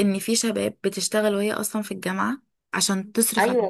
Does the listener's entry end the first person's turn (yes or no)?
yes